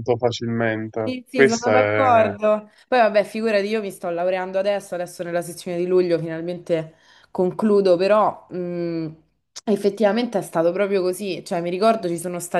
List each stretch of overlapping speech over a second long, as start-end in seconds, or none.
1.1-2.3